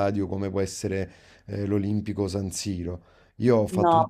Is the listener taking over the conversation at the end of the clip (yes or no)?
no